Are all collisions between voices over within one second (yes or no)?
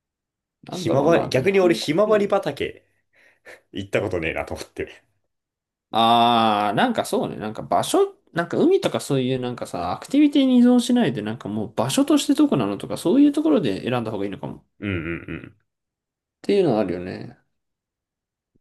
no